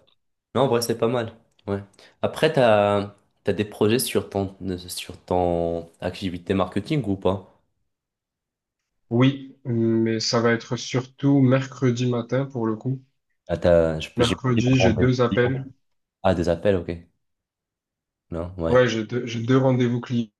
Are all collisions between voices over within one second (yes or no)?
no